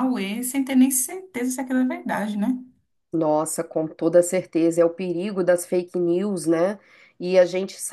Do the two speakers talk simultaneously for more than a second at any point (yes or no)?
no